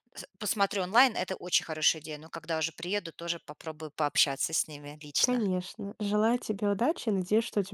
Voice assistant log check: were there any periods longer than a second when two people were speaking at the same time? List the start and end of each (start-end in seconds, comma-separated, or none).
none